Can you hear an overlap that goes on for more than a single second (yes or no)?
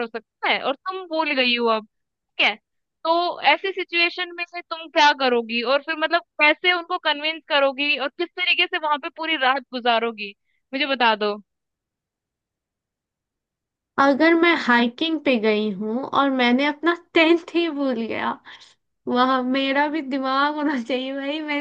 no